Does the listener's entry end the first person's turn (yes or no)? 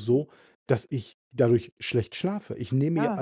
no